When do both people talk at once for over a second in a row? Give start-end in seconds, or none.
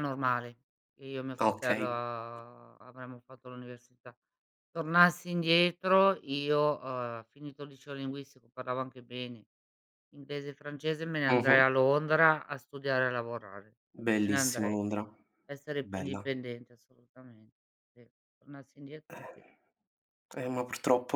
none